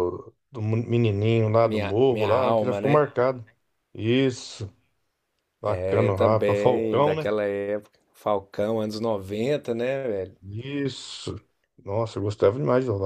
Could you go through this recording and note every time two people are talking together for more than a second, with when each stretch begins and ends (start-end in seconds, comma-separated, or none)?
1.6-3.1, 5.7-7.3